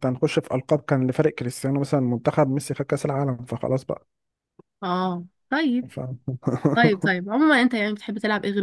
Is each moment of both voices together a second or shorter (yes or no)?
yes